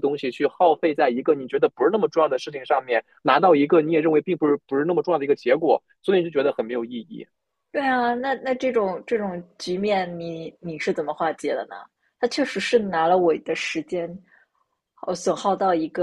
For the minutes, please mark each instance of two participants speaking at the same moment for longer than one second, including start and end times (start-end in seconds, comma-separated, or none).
none